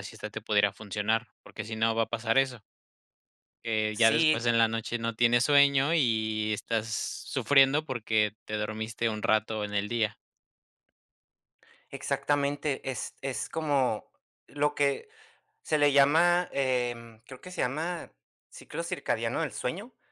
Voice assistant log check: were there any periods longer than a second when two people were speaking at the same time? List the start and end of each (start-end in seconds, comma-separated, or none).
none